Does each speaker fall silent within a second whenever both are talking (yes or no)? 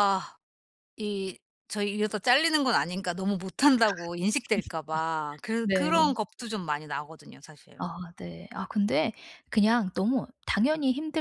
yes